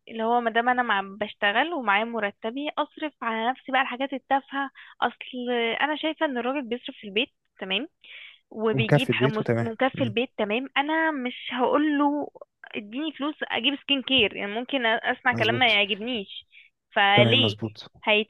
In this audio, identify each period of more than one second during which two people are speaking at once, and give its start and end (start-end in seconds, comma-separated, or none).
8.7-10.1